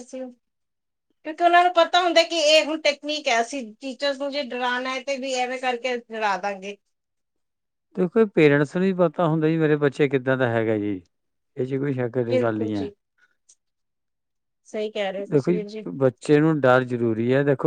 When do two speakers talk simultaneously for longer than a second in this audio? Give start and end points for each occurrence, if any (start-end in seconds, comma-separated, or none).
none